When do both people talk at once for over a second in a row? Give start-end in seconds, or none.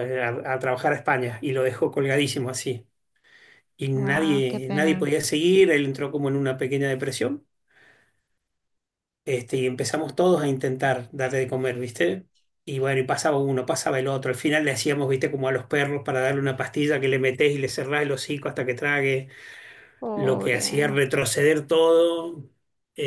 3.9-5.1